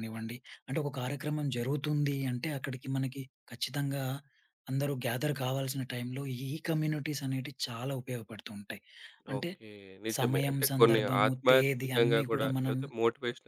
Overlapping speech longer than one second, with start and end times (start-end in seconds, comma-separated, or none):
10.2-12.8